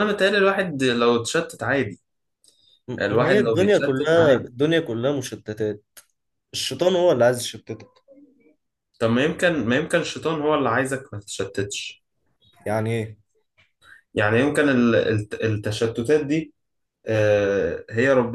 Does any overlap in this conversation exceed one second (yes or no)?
yes